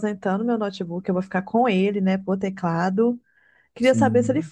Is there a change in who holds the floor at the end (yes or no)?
no